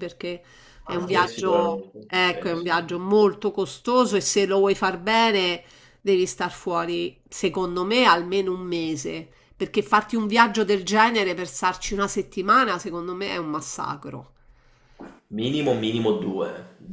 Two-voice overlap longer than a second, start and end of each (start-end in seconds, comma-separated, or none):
0.9-2.9